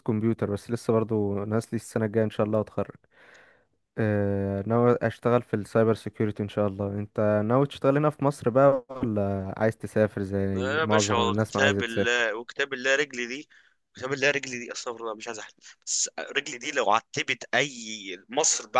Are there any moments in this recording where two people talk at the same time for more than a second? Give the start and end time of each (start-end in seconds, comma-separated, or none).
10.5-12.2